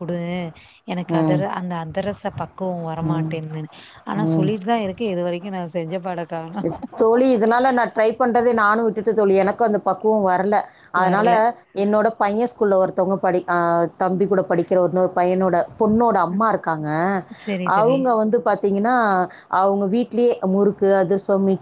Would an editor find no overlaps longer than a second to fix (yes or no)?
yes